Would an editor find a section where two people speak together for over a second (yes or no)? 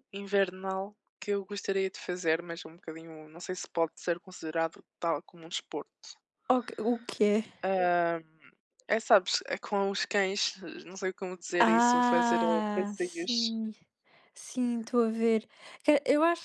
yes